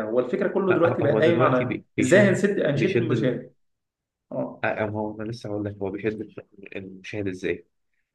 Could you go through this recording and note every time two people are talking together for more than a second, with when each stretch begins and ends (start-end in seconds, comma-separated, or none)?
0.7-3.4